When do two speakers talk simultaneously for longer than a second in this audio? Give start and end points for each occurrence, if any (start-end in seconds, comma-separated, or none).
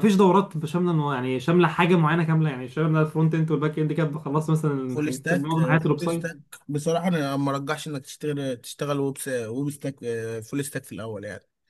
4.9-6.3